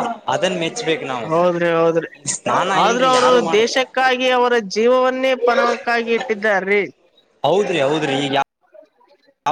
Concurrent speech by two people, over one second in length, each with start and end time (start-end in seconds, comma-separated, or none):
none